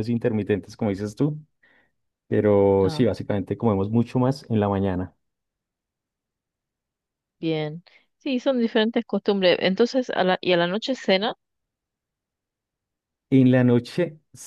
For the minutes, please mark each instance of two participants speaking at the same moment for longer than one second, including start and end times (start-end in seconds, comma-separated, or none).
none